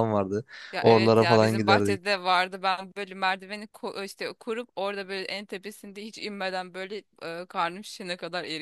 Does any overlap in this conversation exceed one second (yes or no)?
yes